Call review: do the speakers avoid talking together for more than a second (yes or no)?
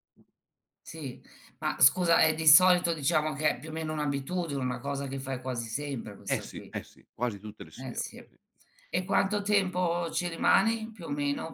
yes